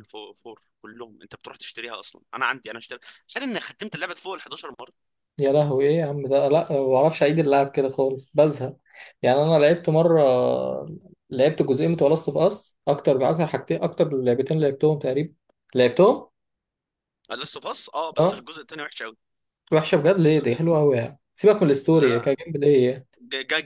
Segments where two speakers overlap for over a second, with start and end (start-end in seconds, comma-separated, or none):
none